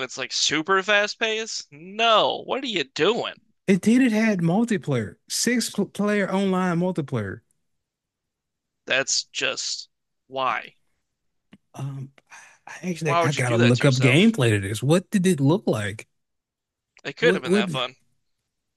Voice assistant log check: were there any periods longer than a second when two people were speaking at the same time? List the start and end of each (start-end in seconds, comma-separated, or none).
13.1-14.3